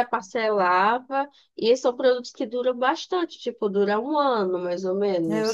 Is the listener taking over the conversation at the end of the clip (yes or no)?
yes